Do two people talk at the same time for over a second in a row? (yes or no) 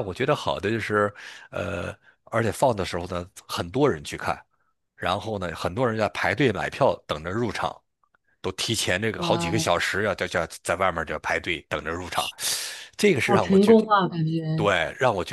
no